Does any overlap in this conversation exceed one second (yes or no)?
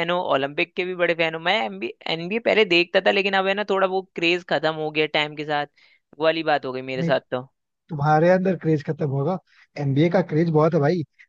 no